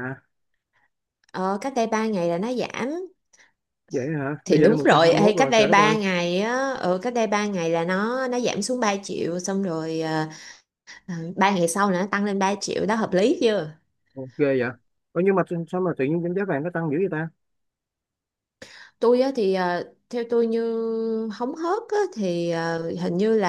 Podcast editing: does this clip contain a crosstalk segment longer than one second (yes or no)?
yes